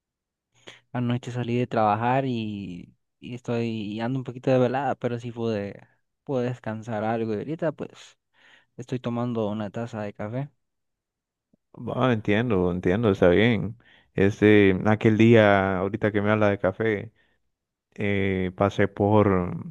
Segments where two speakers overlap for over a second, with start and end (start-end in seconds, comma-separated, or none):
none